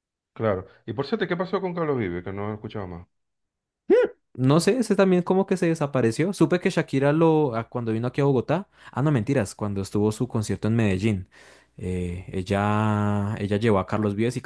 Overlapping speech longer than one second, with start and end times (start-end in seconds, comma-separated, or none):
none